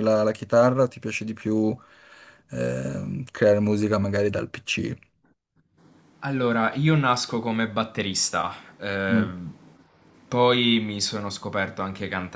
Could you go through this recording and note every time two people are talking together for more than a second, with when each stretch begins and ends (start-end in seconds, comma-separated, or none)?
none